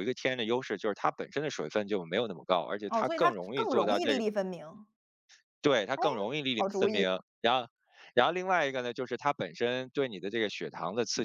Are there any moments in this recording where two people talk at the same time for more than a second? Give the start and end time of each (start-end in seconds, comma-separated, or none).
2.9-4.2